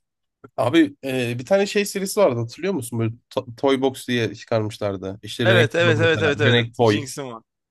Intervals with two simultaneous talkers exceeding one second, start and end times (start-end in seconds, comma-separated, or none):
5.5-7.1